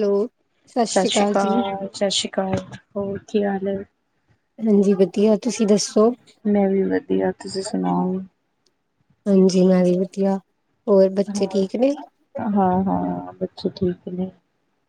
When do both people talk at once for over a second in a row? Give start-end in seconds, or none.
none